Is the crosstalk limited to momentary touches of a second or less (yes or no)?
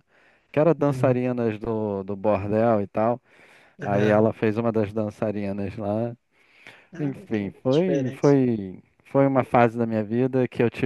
no